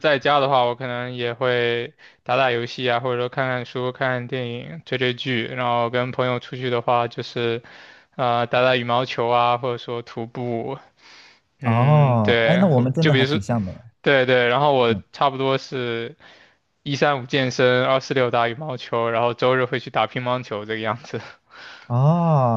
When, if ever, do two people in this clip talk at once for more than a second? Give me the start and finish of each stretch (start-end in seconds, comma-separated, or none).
11.6-13.4